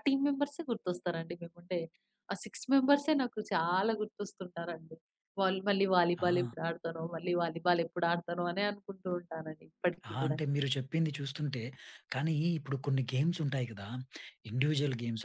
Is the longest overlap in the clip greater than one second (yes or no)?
no